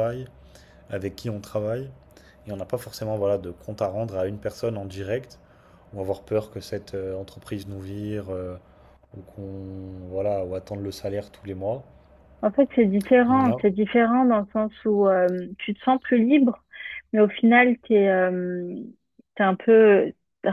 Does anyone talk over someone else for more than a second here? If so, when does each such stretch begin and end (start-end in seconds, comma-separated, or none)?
none